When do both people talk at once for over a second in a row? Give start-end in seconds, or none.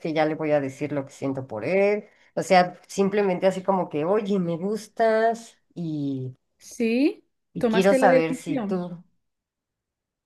7.5-8.8